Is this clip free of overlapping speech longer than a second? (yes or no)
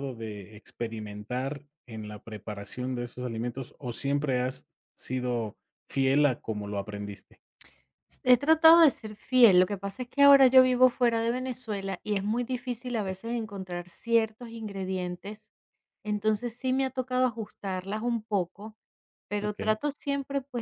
yes